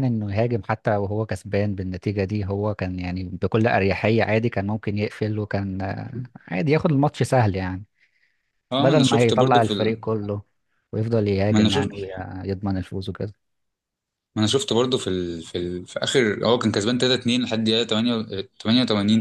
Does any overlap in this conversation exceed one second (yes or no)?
yes